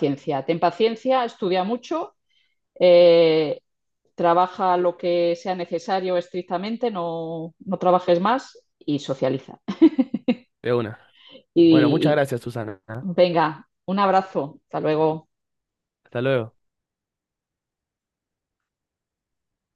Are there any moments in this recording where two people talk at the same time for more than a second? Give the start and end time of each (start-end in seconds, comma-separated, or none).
none